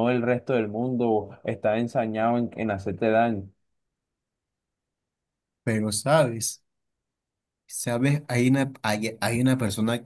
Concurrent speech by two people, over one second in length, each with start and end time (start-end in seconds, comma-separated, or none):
none